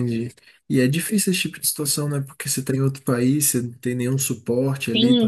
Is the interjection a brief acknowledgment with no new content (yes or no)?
no